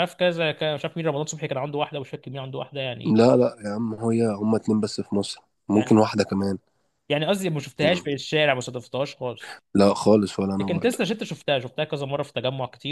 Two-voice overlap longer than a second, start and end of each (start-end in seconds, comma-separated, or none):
none